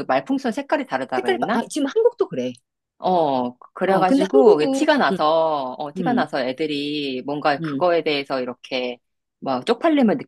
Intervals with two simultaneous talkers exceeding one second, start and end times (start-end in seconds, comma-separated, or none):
3.9-5.2